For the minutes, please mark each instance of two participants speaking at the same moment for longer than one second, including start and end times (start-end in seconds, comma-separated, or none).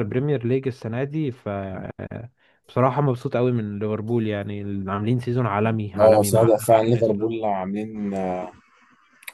6.0-7.4